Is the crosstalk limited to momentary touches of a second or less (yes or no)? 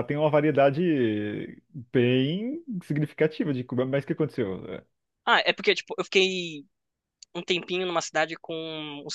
yes